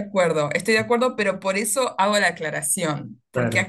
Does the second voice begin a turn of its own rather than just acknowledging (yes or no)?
no